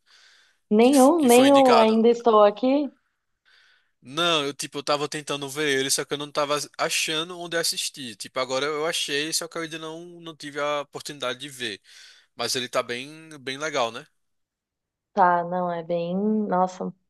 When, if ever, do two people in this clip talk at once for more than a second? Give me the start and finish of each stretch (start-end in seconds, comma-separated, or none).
0.8-2.0